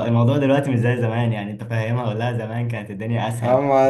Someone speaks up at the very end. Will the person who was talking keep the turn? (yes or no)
no